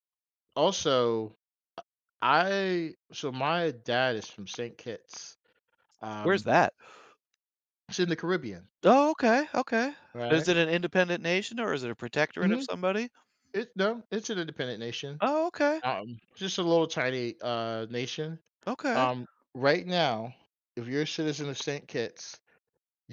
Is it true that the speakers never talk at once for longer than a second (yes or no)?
yes